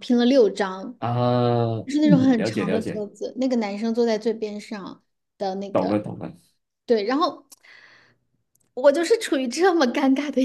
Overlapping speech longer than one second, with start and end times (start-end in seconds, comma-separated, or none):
1.9-3.0